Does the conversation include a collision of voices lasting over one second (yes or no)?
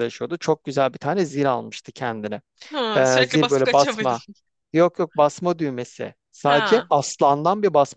yes